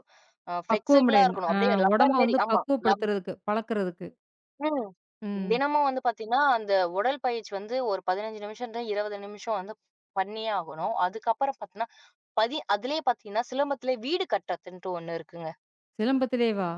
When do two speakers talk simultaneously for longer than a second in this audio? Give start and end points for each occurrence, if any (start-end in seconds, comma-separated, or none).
0.7-2.6